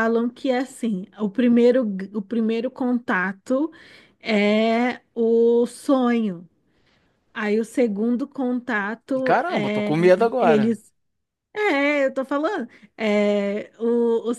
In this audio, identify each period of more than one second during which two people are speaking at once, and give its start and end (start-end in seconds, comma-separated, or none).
9.1-10.8